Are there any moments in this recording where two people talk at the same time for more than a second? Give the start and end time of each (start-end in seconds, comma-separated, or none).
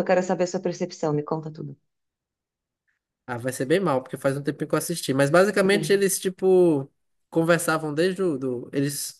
none